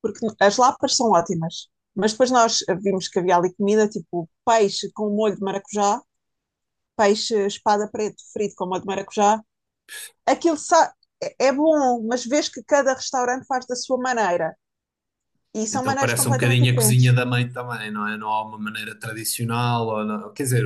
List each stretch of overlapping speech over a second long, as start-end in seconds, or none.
15.7-17.2